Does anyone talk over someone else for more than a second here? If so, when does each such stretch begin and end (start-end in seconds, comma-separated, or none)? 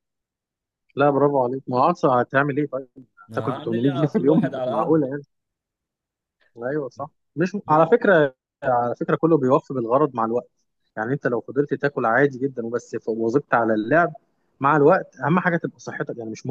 3.3-5.1